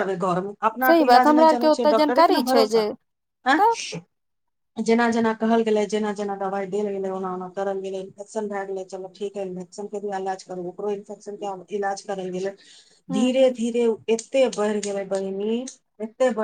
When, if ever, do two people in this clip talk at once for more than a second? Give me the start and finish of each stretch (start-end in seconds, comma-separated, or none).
0.9-2.8